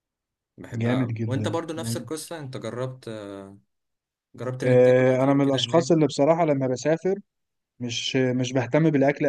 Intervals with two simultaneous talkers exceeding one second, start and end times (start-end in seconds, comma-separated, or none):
0.7-2.1, 4.6-6.0